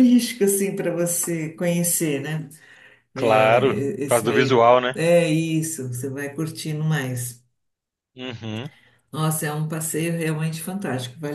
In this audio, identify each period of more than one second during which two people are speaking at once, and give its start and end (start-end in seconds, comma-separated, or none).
3.1-5.0